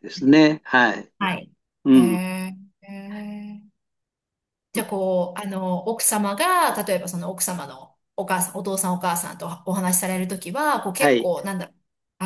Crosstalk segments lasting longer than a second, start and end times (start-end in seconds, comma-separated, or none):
none